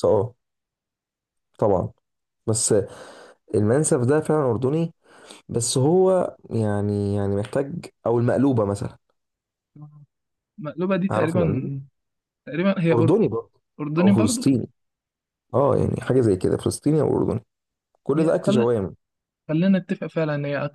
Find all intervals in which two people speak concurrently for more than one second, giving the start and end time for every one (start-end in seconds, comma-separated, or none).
none